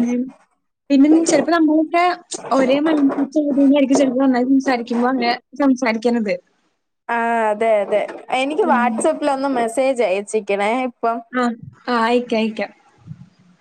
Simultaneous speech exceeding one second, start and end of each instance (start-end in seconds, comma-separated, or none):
none